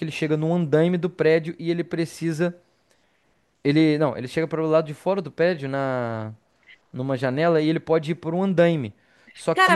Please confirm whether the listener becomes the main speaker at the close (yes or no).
yes